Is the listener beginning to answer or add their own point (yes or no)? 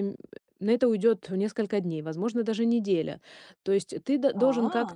no